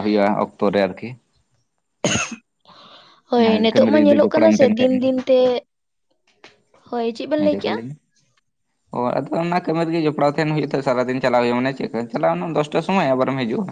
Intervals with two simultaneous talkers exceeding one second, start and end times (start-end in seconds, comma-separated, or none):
3.4-5.2